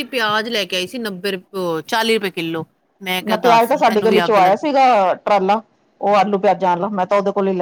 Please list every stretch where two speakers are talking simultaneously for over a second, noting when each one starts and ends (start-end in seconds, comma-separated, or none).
3.3-4.7